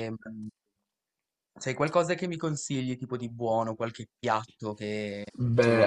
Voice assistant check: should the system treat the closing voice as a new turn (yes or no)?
yes